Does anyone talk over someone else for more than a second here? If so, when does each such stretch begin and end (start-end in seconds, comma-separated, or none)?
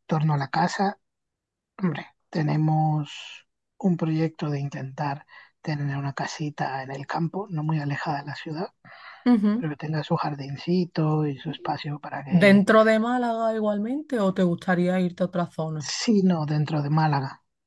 none